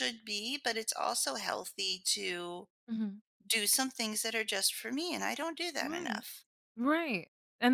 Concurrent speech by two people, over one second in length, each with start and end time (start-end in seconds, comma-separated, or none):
none